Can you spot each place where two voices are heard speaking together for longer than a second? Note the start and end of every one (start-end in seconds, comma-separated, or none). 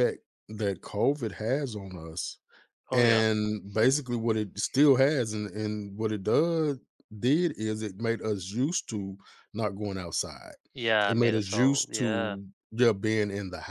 11.1-12.4